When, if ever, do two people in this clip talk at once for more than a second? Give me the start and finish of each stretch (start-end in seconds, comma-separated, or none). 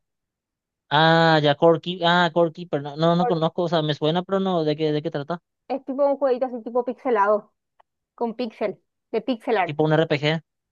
none